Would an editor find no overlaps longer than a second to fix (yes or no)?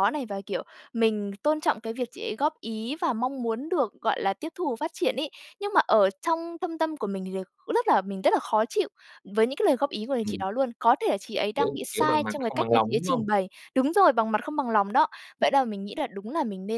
no